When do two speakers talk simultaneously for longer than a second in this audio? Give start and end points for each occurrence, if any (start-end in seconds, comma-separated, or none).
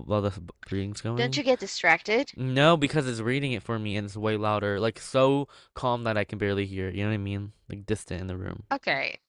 none